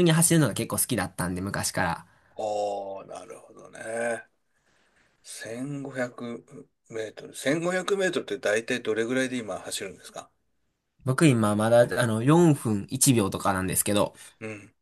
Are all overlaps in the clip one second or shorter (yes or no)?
yes